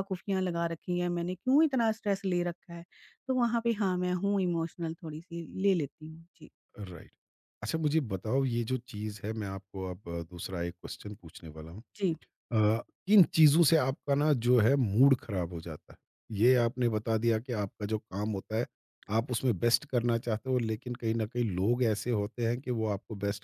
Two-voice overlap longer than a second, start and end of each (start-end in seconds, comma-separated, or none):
none